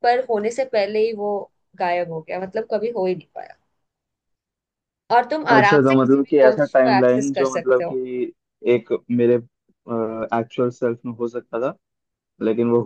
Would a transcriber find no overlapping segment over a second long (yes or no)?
no